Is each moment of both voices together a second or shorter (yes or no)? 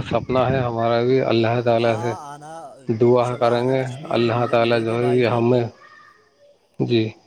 no